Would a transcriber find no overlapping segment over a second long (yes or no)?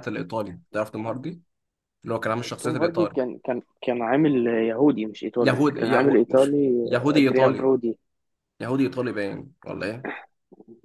no